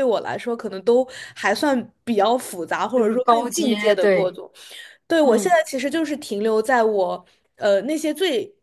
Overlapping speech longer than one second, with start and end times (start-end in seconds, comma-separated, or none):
3.0-4.4